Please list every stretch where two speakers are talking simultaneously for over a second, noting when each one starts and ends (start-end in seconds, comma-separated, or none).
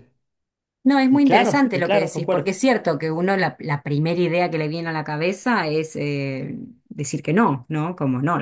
1.1-2.6